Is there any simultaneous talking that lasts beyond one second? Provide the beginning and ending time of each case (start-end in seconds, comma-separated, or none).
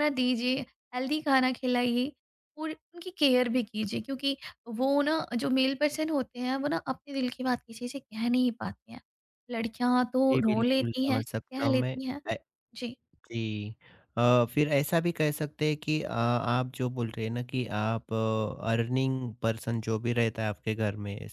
10.3-12.0